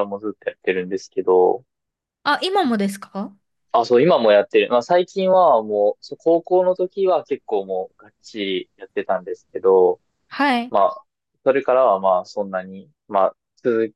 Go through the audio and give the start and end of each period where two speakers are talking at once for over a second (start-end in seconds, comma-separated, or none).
none